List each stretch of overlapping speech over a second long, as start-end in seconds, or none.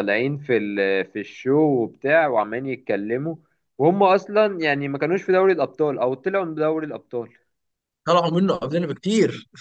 none